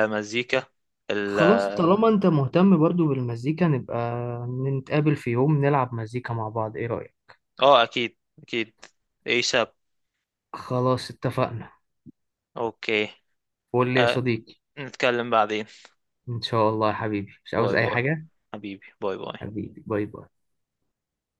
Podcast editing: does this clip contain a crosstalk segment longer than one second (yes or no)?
no